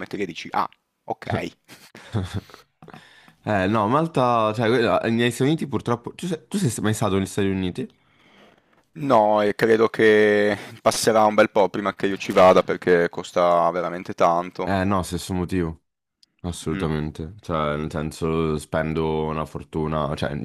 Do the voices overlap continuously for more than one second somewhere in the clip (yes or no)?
no